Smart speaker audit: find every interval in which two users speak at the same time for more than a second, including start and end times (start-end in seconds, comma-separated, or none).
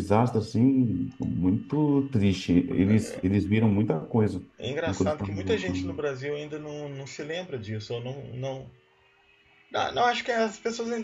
none